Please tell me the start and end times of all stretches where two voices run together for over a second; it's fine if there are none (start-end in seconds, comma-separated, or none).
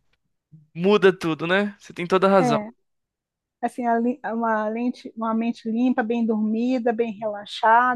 none